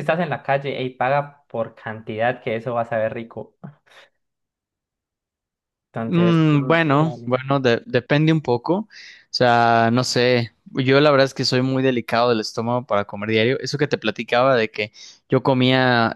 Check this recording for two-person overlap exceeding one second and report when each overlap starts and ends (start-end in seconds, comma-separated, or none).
6.0-7.3